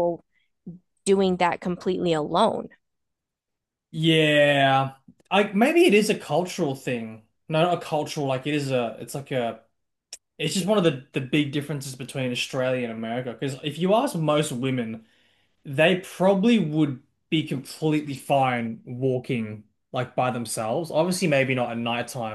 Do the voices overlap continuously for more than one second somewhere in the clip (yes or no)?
no